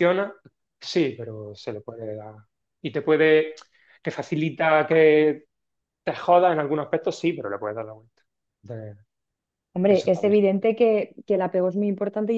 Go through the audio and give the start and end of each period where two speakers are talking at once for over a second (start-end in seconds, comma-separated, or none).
none